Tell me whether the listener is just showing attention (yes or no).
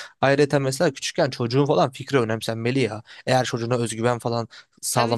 no